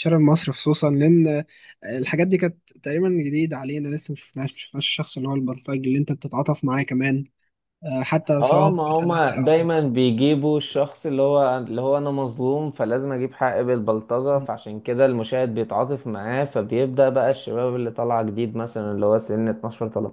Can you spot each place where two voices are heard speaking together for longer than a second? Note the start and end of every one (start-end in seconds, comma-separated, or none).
8.4-9.8